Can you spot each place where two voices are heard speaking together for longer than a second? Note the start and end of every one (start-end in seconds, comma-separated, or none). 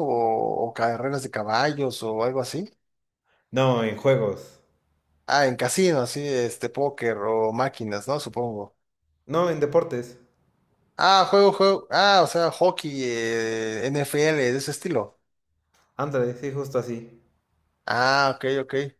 none